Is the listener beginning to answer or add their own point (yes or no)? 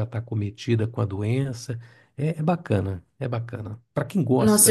yes